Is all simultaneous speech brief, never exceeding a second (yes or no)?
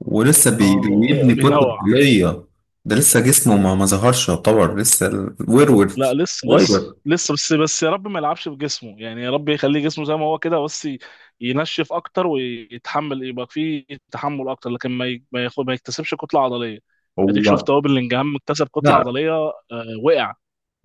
no